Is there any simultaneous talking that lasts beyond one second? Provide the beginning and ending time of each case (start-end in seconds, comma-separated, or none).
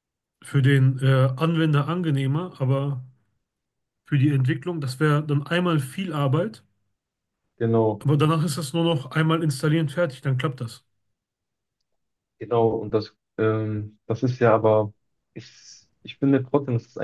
none